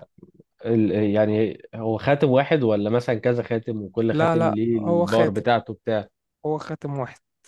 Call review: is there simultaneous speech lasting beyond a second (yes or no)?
yes